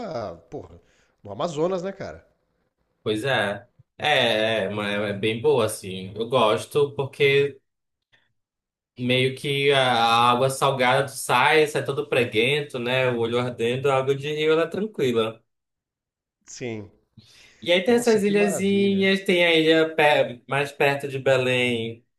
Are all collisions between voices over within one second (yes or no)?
no